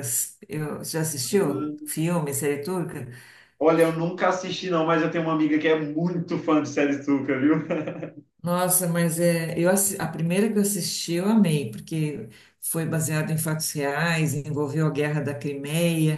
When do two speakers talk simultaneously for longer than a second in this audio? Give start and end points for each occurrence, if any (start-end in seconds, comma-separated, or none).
none